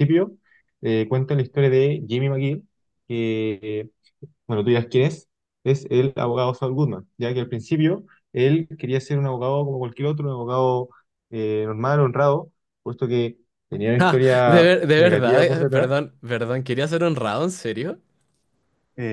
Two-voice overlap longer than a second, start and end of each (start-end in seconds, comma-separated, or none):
14.0-15.9